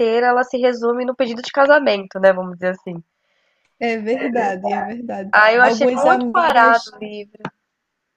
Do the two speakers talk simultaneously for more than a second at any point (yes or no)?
yes